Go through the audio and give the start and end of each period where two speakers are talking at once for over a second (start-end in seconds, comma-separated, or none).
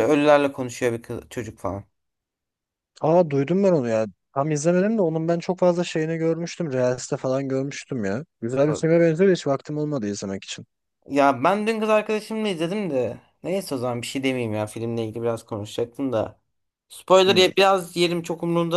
none